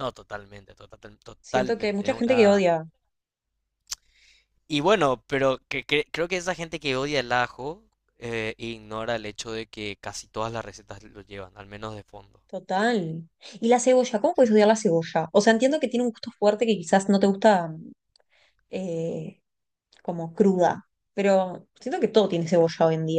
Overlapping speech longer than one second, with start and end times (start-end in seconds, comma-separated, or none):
1.4-2.6